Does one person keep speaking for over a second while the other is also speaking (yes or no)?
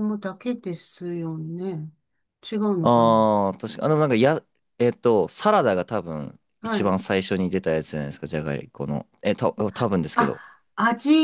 no